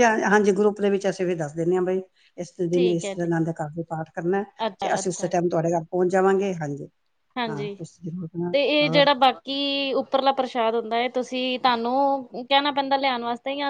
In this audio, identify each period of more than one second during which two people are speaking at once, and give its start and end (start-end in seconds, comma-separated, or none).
none